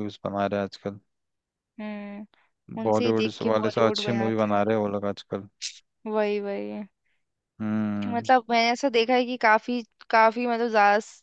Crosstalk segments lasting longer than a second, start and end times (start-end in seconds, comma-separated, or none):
2.9-4.7